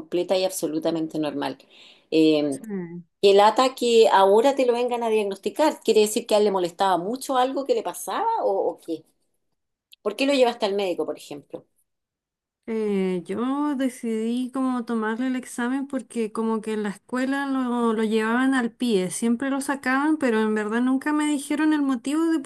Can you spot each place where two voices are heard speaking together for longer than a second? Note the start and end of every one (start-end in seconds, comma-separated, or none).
none